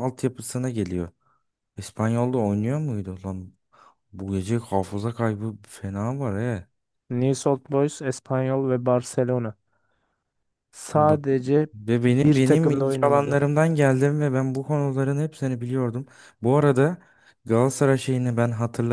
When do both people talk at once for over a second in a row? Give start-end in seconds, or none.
12.1-13.4